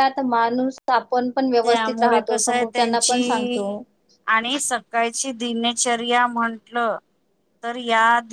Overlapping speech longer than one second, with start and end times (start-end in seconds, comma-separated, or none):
1.6-3.7